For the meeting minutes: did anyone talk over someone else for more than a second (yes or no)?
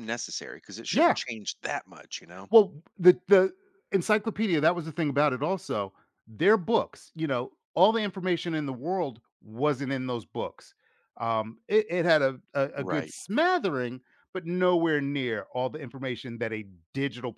no